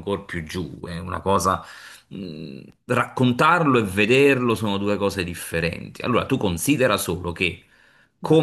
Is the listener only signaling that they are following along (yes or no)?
yes